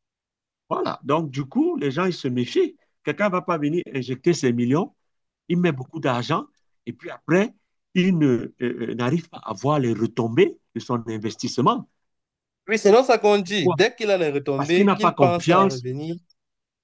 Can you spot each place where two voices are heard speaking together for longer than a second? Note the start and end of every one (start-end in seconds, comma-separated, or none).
14.6-15.8